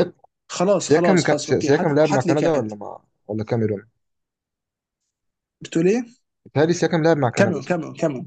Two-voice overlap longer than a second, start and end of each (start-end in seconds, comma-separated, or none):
0.8-2.7